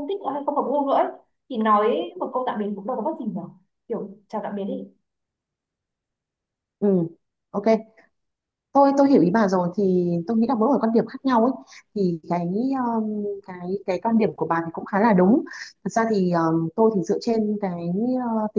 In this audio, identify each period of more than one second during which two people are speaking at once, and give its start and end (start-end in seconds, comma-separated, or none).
none